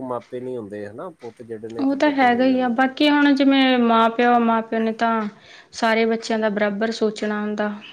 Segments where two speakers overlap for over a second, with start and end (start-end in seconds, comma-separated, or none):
none